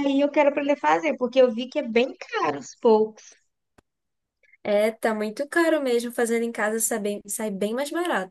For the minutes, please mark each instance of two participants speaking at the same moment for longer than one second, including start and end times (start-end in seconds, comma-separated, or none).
none